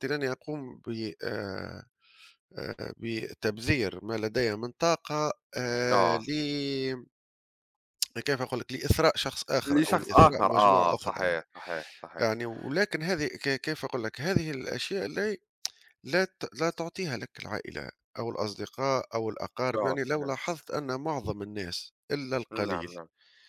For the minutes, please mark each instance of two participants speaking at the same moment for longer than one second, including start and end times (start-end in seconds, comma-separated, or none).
9.7-11.4